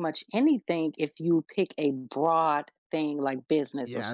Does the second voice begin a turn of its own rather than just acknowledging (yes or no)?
yes